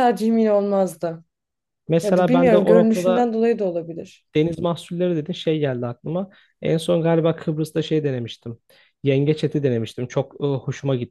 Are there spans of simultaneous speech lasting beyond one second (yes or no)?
yes